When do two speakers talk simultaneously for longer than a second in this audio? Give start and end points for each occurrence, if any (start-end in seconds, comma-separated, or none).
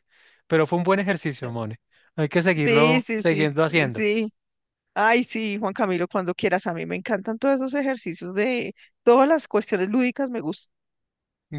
2.6-4.0